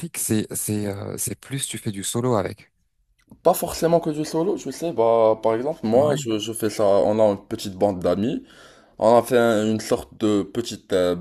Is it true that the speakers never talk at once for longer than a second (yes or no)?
yes